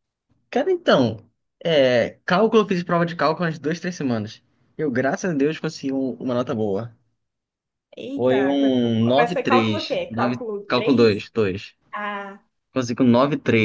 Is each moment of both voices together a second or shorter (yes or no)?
no